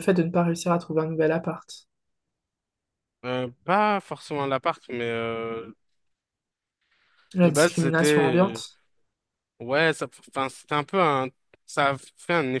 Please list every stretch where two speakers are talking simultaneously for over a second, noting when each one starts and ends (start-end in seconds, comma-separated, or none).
7.4-8.6